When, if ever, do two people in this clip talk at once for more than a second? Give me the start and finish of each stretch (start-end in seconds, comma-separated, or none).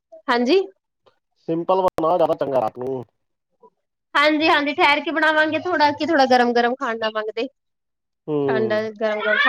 none